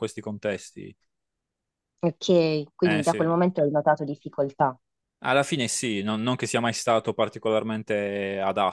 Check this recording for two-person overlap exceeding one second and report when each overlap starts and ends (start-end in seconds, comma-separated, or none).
none